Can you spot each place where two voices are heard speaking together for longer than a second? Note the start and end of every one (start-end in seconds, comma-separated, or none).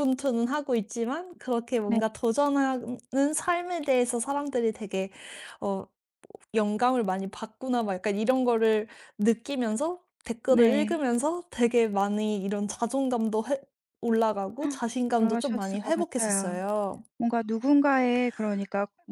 15.2-16.6